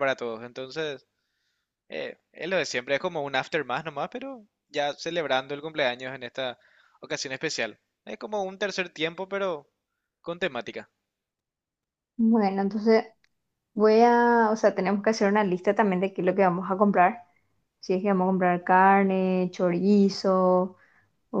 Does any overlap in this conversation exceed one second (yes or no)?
no